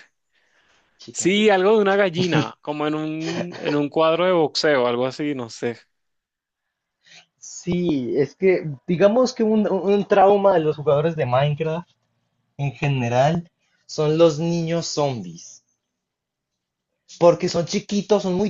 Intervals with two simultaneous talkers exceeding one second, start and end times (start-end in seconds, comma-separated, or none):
none